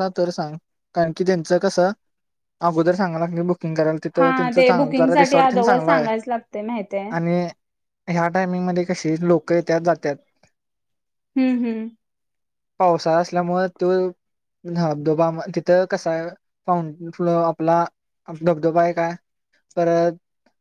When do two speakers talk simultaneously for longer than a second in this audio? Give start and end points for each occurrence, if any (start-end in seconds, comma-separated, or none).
4.2-6.0